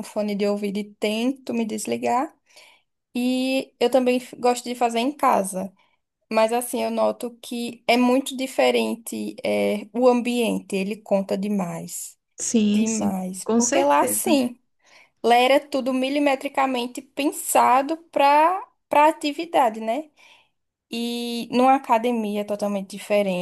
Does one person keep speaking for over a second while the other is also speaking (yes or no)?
yes